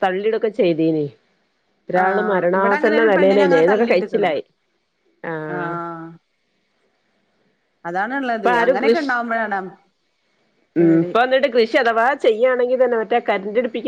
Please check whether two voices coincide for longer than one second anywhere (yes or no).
yes